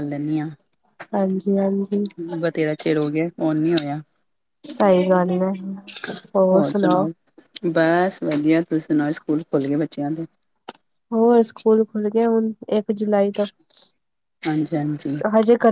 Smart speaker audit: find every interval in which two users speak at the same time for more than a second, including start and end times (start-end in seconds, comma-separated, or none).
none